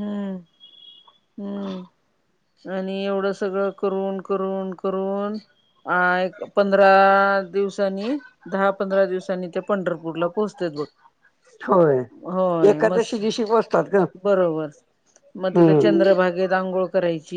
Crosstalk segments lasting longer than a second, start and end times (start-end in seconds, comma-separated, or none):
none